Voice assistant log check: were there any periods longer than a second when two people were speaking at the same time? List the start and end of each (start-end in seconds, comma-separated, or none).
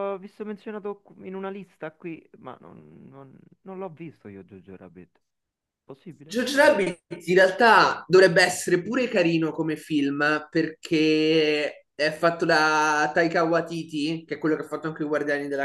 none